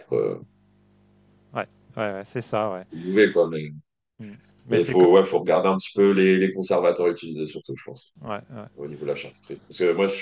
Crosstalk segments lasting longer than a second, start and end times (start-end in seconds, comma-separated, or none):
none